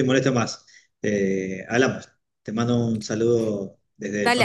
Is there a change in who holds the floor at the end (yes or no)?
yes